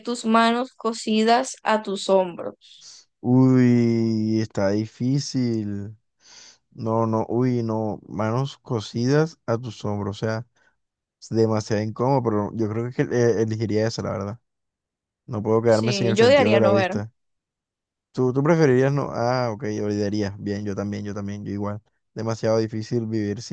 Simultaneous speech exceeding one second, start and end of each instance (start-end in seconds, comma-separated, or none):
15.7-16.9